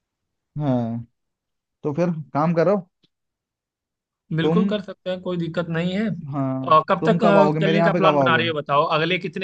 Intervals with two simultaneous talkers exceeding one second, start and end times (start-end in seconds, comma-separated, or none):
6.7-8.4